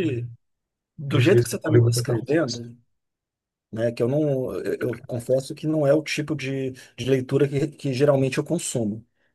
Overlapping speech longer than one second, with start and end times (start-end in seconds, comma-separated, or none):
1.1-2.6